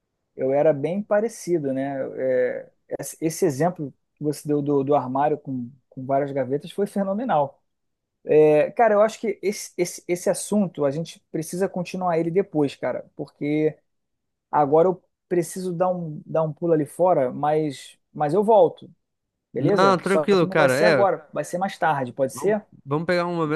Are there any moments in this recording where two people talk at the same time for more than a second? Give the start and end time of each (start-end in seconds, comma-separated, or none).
19.6-21.1